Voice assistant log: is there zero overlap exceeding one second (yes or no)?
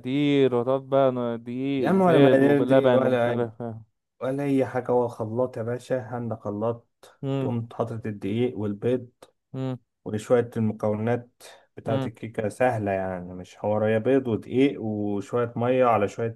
no